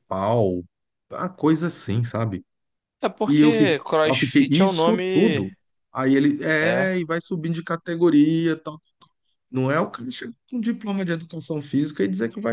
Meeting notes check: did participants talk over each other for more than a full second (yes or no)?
yes